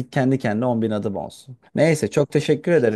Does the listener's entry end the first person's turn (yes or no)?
no